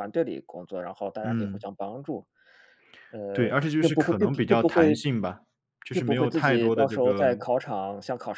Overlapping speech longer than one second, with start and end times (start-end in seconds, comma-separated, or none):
3.3-5.1, 5.9-7.3